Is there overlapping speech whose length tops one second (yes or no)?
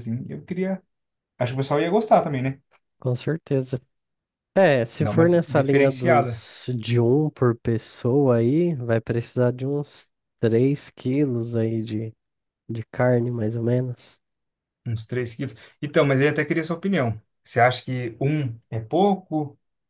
yes